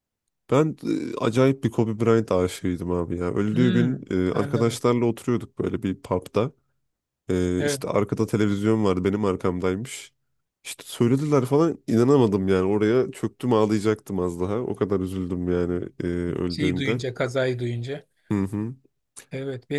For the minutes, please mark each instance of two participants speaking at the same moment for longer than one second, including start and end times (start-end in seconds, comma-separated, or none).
3.5-4.8